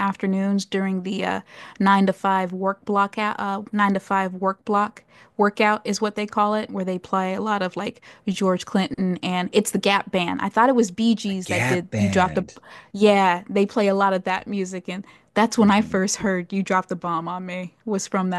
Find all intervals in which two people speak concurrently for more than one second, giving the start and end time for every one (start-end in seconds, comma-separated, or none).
11.2-12.5